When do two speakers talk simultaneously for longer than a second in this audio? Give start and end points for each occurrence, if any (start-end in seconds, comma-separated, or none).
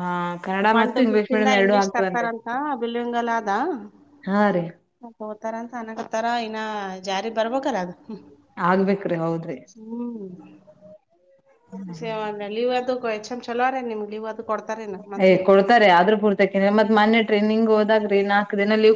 0.8-2.3